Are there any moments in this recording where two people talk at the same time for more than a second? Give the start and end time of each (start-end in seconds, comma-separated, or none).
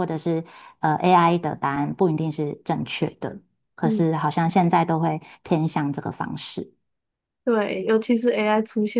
none